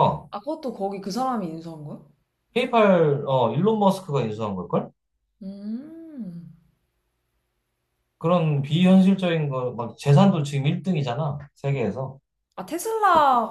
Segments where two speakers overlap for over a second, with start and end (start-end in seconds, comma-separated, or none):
none